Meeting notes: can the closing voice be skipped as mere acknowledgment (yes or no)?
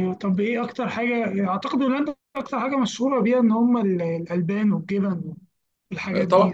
no